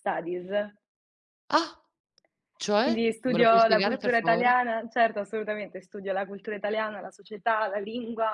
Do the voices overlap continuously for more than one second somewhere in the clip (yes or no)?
yes